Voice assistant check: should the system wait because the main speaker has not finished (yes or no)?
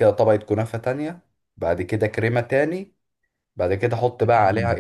yes